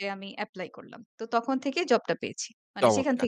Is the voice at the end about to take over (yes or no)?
yes